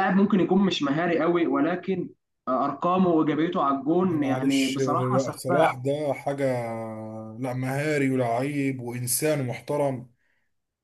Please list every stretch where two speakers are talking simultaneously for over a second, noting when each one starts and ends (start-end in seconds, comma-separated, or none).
4.0-5.8